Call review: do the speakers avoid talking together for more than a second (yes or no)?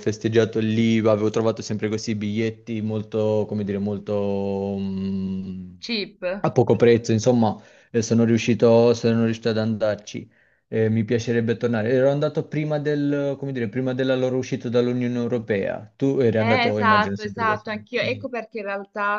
no